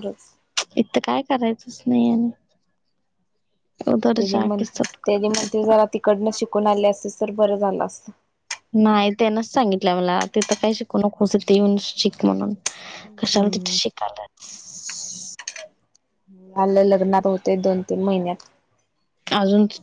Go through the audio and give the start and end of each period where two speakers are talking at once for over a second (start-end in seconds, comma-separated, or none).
4.2-5.5